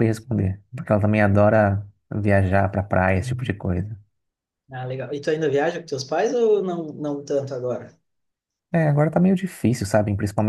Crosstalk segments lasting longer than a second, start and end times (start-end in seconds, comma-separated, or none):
none